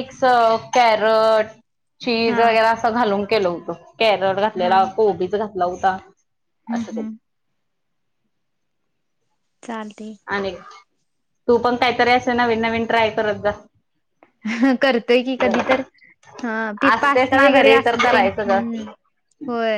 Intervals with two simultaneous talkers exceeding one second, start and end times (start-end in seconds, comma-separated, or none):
16.9-18.6